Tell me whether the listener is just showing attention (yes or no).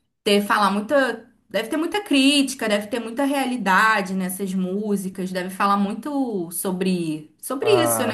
no